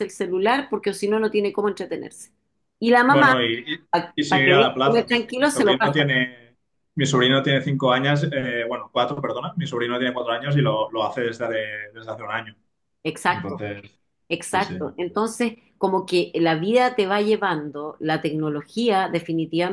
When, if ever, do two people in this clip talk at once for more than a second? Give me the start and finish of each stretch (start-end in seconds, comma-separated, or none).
4.3-6.1